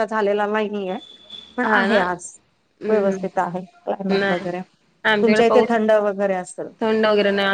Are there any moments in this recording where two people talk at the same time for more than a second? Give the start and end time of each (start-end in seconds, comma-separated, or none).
none